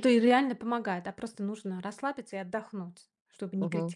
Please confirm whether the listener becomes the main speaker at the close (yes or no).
yes